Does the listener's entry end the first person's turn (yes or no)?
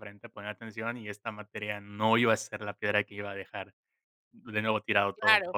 yes